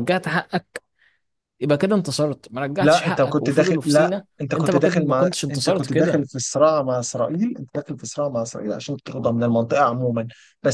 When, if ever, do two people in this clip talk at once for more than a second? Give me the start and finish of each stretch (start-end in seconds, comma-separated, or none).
2.8-6.3